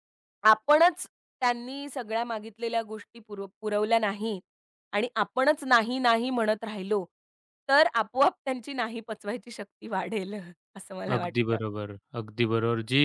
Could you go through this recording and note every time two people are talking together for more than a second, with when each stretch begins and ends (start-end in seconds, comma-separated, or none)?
none